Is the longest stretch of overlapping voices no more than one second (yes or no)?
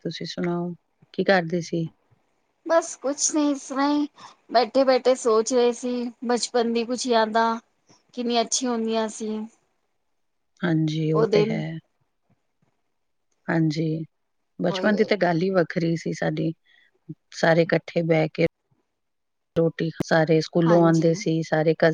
yes